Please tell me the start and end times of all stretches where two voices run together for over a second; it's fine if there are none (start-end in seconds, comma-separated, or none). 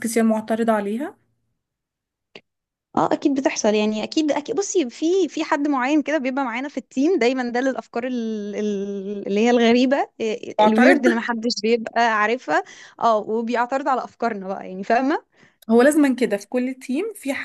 none